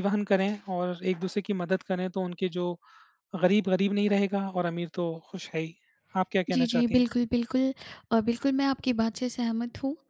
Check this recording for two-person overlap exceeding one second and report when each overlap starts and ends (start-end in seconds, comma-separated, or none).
none